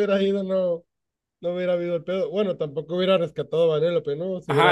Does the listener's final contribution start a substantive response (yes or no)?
yes